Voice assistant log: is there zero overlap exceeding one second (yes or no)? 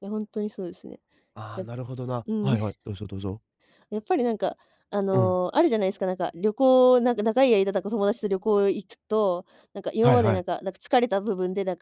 yes